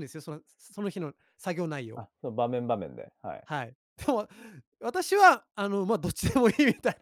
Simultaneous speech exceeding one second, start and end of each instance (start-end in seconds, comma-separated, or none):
none